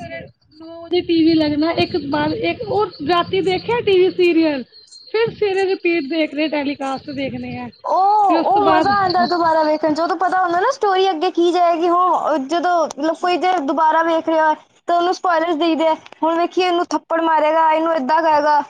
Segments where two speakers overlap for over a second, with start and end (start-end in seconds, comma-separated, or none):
none